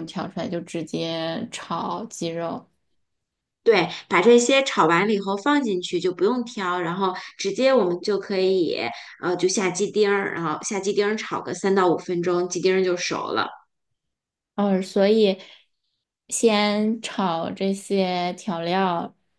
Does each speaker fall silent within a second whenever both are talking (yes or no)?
yes